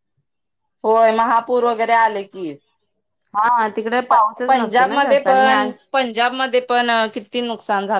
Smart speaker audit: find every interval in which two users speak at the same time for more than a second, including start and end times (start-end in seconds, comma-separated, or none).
none